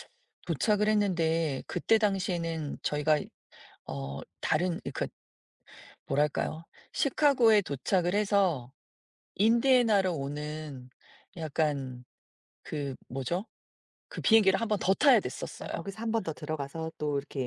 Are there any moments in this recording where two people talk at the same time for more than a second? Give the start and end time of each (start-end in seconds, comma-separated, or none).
none